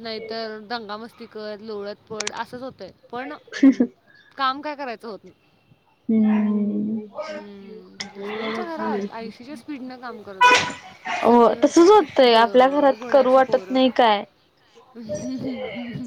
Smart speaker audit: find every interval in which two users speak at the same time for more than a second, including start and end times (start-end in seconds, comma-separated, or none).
11.3-13.8